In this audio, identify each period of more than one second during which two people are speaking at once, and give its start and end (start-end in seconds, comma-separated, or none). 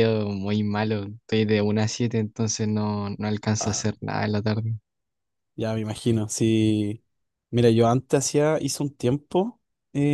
none